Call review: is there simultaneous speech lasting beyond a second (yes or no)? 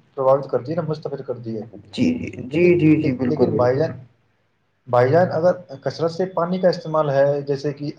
no